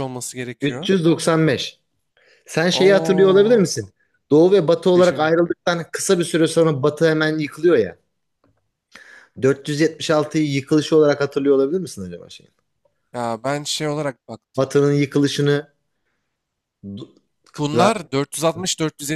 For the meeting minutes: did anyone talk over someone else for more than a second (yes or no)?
yes